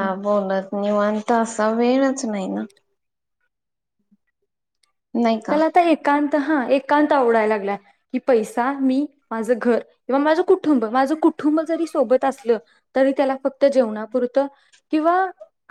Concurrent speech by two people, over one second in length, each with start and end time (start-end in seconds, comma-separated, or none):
none